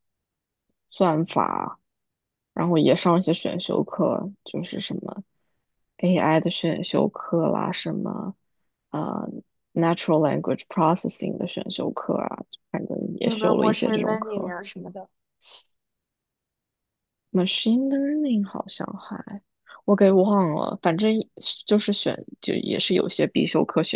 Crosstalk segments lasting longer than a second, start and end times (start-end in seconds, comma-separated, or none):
13.2-14.5